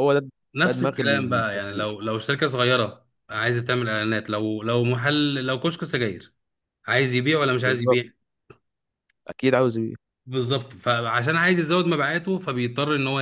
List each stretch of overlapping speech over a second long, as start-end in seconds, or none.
0.6-1.9